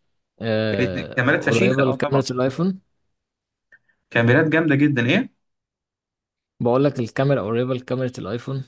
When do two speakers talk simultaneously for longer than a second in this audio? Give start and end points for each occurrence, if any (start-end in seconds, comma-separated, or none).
0.8-2.2